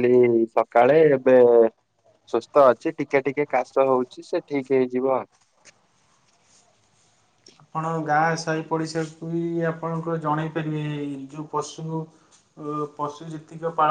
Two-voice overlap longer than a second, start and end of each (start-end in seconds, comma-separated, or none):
none